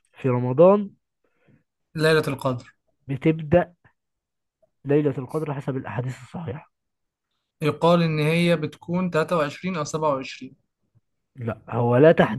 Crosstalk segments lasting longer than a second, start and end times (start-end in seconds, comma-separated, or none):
none